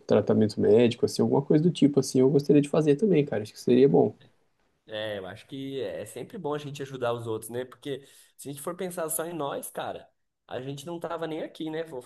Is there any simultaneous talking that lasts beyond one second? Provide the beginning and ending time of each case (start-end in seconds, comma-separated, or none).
none